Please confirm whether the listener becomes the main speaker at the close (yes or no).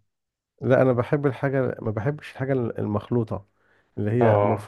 no